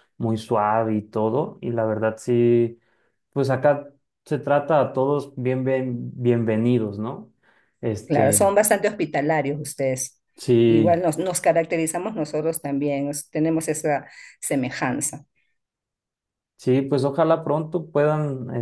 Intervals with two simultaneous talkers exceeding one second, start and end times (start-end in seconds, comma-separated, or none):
none